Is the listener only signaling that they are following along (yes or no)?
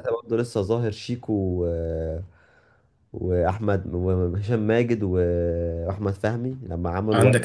no